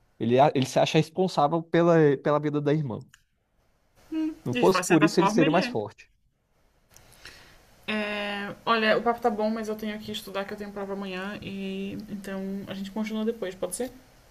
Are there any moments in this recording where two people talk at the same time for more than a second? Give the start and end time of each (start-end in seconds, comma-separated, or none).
4.5-5.8